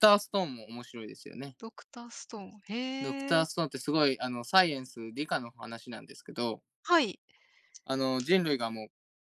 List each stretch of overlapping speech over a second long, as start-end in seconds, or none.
none